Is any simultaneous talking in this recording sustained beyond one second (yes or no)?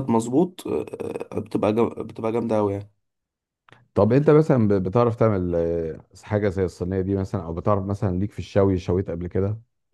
no